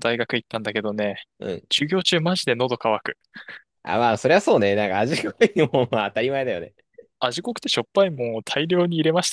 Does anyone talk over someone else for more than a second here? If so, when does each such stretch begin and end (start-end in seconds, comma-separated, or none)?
none